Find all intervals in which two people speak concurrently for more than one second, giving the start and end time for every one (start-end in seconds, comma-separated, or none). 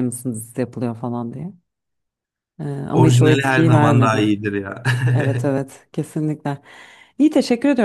2.9-4.2